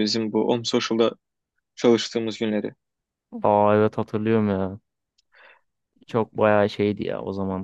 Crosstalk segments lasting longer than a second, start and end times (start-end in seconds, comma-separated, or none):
none